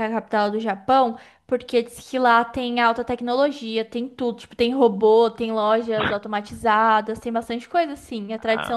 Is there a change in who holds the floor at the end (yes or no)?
no